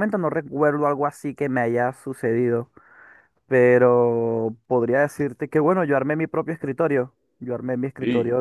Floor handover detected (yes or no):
no